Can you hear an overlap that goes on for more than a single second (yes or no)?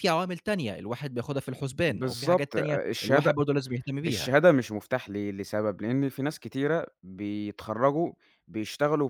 yes